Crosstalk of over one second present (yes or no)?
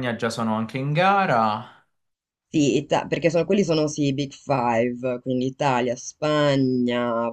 no